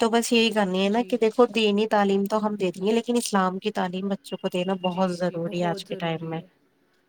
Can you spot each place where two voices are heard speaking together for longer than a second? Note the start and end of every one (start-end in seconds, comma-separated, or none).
none